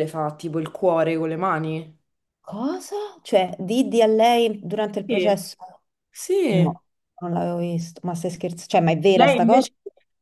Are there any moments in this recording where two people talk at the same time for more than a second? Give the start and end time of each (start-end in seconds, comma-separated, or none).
none